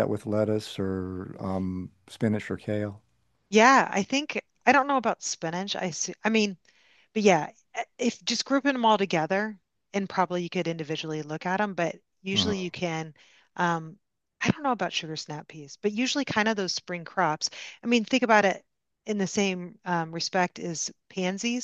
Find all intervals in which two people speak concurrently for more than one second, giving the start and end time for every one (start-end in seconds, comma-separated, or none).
none